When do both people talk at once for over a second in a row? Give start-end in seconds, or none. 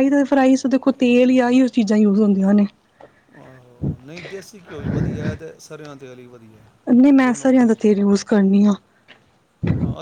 none